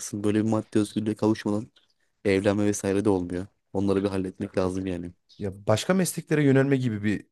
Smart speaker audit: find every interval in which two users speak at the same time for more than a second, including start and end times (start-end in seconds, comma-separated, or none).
none